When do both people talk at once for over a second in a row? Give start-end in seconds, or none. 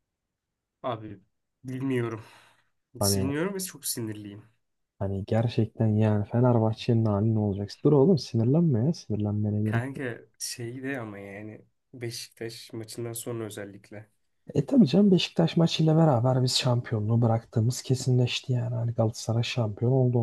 none